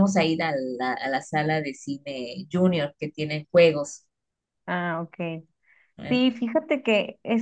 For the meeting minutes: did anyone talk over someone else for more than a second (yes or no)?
no